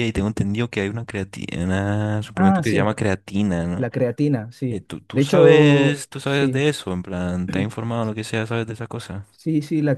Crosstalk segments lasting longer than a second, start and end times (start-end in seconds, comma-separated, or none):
4.7-6.7